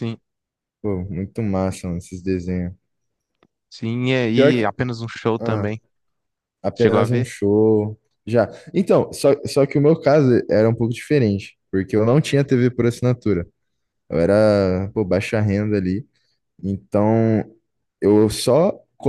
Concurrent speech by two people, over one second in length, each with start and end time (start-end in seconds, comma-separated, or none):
none